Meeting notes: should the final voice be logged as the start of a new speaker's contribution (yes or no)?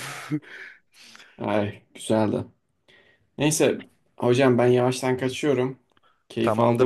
yes